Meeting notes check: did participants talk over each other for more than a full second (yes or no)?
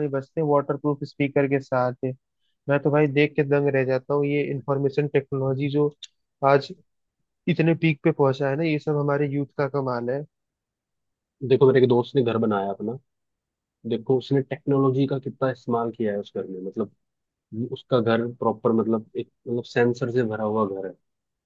no